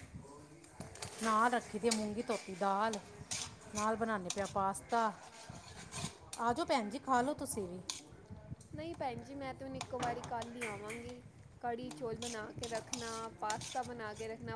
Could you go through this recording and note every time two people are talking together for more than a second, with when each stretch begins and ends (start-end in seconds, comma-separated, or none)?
none